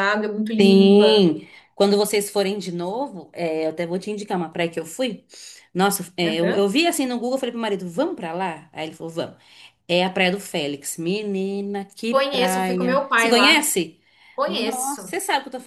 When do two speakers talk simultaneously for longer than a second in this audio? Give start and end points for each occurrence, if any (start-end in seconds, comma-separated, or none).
12.1-13.7